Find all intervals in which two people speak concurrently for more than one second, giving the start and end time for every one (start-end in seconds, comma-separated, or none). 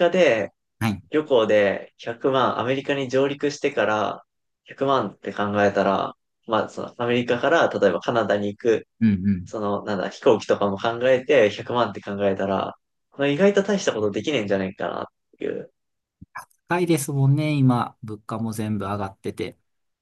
none